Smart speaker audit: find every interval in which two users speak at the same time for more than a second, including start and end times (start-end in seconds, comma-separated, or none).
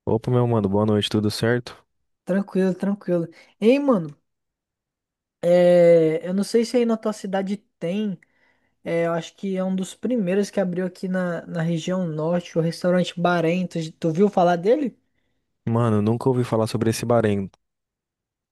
none